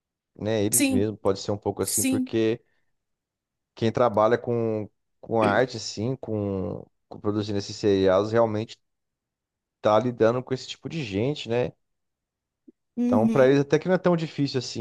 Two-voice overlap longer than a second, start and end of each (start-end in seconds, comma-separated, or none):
none